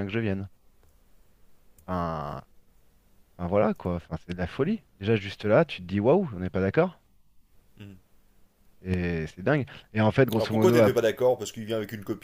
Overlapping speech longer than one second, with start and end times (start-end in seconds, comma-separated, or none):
none